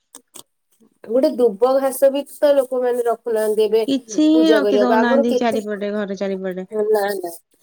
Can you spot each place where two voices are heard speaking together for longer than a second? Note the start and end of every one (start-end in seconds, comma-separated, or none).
4.4-6.6